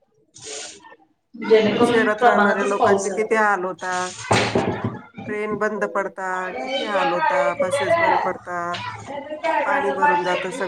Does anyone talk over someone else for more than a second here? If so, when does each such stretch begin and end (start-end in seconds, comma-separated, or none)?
1.6-3.4